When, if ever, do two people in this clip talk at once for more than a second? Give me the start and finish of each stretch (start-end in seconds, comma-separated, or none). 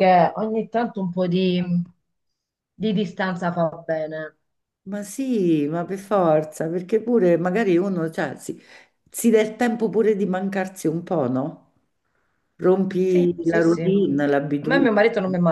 13.1-14.9